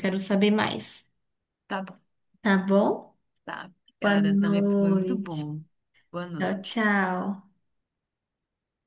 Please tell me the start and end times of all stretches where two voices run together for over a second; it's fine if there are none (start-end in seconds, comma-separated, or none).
4.0-5.5